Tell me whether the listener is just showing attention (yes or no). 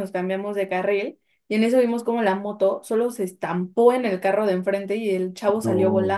yes